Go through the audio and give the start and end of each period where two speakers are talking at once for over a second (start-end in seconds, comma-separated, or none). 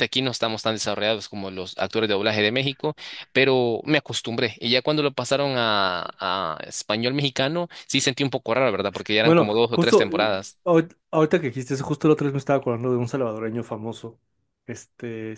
9.2-10.6